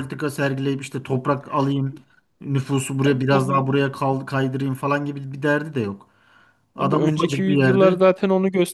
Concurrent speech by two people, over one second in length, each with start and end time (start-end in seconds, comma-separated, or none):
6.8-8.0